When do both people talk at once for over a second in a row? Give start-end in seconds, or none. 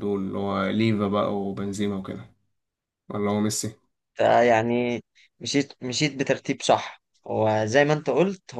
none